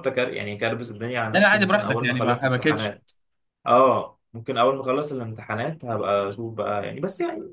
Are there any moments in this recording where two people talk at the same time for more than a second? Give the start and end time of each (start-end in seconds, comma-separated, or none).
1.3-2.9